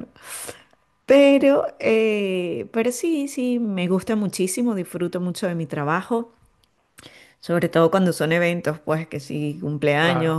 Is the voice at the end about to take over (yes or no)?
no